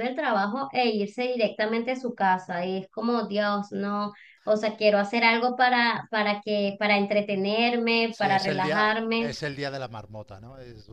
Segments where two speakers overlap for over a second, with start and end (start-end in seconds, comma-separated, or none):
8.1-9.3